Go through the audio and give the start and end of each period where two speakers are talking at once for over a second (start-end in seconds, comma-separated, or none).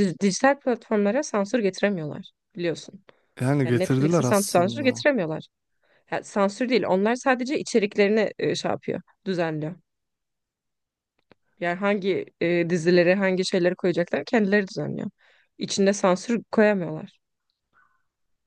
3.6-5.0